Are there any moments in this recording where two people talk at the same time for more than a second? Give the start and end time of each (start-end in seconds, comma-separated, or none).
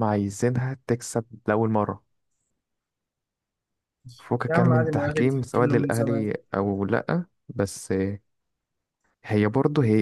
4.5-6.3